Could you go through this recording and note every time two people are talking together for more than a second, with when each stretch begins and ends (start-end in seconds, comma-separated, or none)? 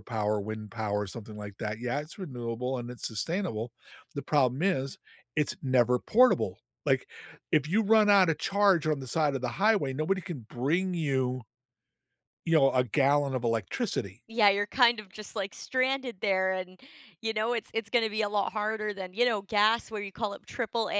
none